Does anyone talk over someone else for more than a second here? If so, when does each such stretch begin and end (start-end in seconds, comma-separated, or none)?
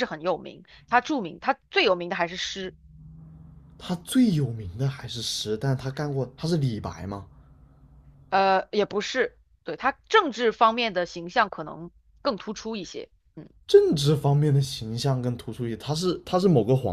none